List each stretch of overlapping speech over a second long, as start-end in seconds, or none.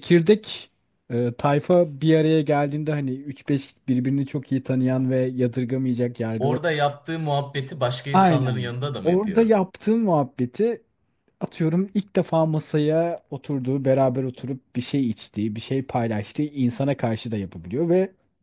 8.1-9.6